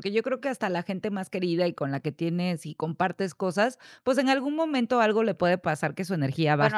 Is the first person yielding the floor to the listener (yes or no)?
yes